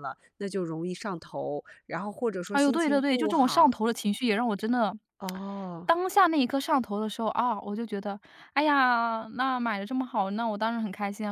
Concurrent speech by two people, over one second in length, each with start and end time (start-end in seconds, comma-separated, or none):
2.5-3.8